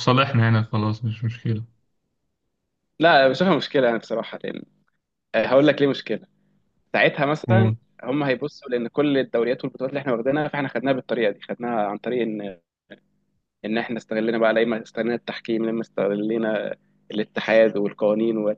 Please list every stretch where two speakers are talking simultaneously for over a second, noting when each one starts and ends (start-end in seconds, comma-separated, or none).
none